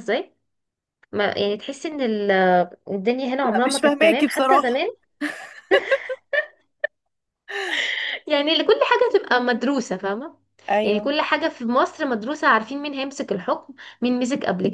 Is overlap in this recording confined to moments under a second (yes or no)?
no